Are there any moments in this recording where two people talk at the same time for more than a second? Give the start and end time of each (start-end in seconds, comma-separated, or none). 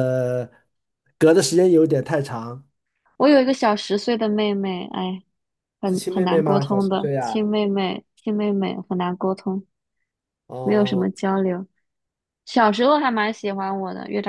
5.9-7.5